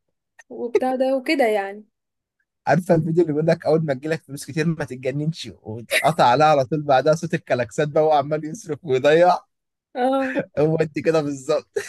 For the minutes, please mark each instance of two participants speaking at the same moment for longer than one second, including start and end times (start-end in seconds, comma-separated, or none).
none